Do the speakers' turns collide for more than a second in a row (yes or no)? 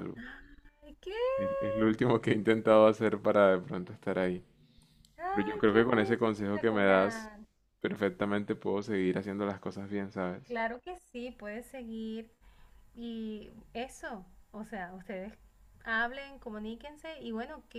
yes